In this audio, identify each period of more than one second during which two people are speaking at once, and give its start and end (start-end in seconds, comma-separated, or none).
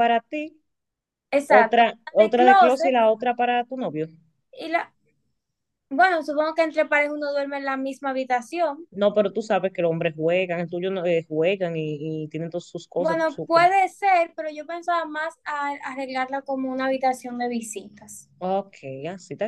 1.5-3.0